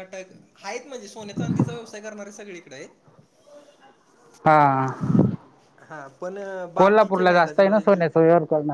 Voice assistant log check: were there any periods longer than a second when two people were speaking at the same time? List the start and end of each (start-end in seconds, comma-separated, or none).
6.8-8.1